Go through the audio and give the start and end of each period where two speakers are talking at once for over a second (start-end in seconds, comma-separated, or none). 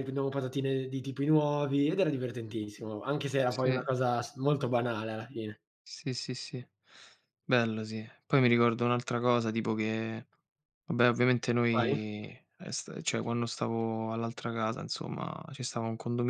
none